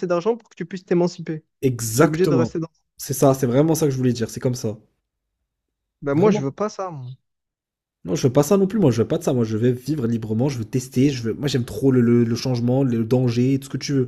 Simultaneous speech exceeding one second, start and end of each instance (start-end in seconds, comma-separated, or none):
none